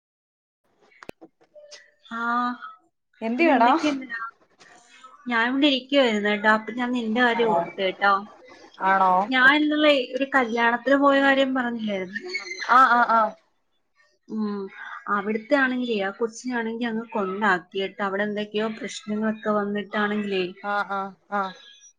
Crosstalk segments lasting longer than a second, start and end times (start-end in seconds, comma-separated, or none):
none